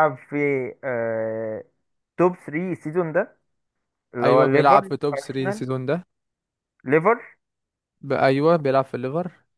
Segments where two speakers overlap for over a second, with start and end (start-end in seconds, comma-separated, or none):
4.2-5.6